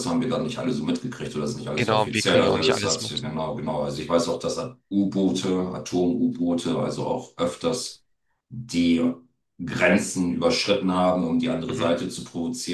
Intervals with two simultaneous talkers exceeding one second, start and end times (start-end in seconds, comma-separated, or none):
1.7-3.3